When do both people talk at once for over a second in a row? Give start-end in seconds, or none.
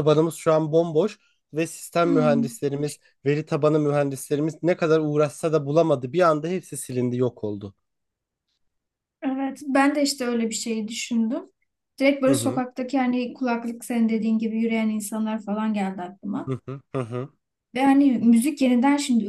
none